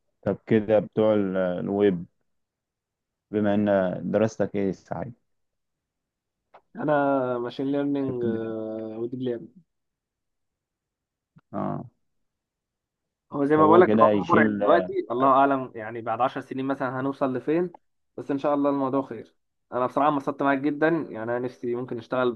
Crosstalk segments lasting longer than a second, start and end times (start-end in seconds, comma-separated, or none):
13.5-14.9